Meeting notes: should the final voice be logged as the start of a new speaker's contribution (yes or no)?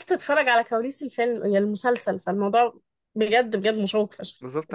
yes